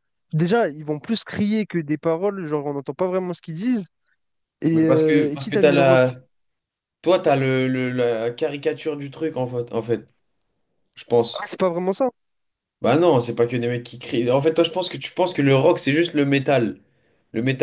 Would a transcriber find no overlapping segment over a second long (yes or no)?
no